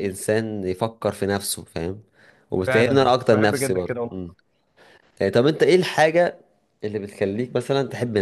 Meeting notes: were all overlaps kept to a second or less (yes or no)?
no